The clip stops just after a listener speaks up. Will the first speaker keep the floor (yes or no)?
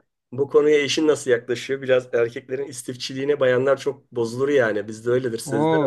no